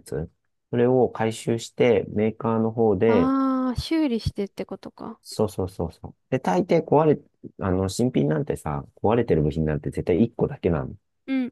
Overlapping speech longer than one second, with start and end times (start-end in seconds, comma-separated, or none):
none